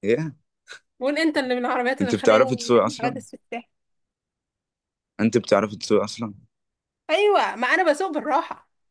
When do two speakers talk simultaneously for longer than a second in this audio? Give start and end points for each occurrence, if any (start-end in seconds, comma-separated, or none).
2.0-3.2